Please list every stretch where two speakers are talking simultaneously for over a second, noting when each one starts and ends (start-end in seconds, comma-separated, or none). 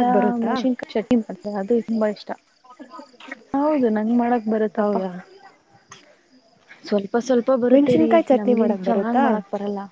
7.7-9.2